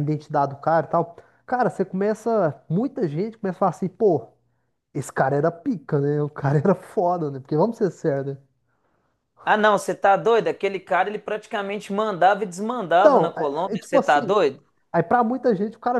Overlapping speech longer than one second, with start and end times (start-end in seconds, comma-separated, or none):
12.9-14.4